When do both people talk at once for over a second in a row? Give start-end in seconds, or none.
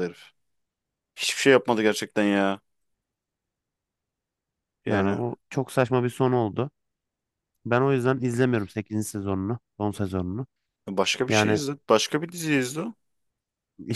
none